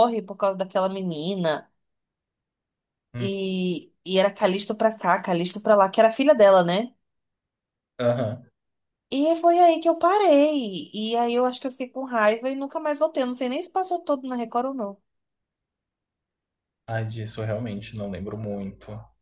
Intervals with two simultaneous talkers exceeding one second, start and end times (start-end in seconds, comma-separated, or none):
none